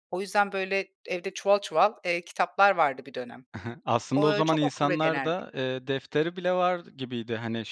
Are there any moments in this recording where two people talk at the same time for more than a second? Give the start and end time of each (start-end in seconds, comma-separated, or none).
4.2-5.3